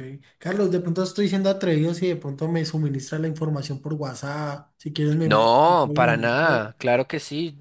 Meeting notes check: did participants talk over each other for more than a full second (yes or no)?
yes